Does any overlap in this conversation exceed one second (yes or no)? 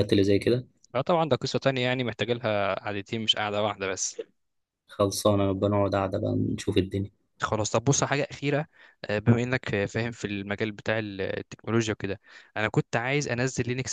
no